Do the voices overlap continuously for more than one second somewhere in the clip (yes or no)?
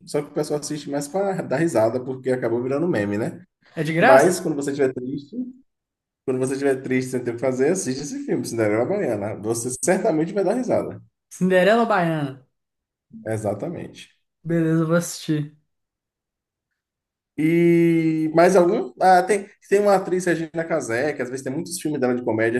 no